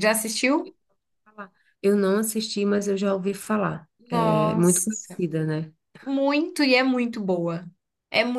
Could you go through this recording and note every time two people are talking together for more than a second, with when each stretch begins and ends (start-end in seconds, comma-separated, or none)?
4.0-5.2